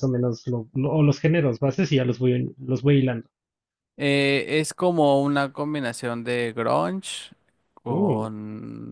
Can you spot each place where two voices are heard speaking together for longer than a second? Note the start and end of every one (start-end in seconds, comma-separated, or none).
none